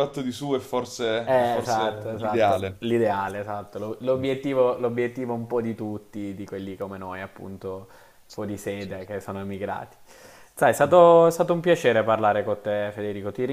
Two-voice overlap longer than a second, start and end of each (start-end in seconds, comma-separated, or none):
1.2-2.8